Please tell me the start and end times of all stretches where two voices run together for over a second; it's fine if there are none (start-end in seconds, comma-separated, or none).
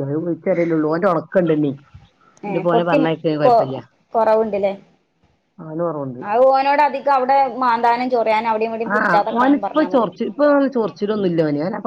none